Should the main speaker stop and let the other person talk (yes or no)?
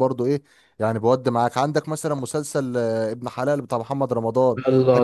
yes